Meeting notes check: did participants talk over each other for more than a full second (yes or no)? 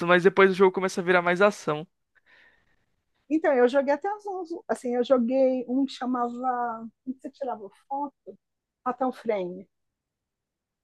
no